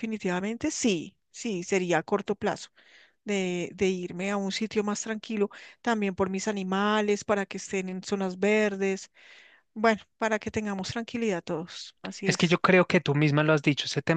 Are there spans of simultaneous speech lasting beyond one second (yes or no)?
no